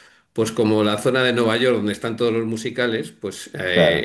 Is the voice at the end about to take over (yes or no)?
no